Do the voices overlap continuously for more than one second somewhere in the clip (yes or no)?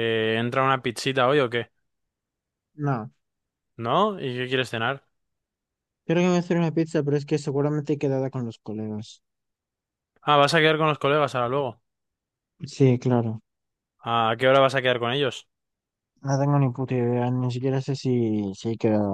no